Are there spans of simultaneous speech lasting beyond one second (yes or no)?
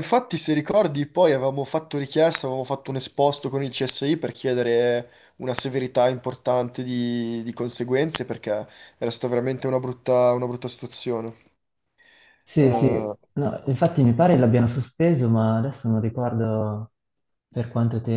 no